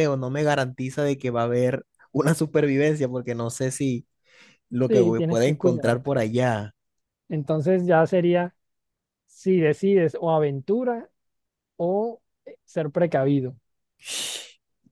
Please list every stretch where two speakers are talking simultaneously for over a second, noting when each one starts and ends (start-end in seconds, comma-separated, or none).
4.9-6.1